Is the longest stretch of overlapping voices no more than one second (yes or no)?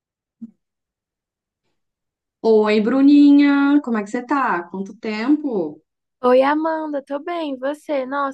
yes